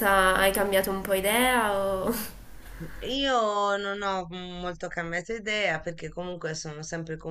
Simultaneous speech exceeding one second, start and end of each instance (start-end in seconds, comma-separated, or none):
none